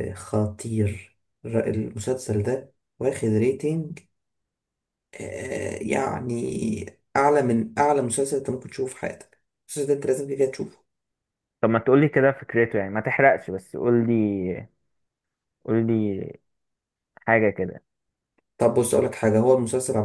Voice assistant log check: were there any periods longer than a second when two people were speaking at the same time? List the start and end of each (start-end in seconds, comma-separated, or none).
none